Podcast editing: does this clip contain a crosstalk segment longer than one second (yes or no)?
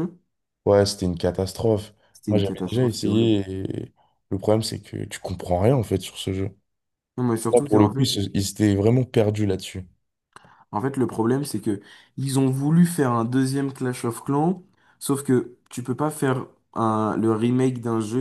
yes